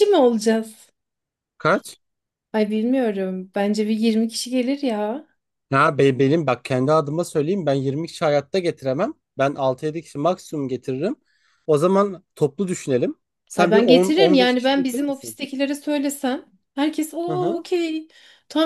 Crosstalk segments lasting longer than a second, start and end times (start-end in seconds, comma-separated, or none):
13.6-15.4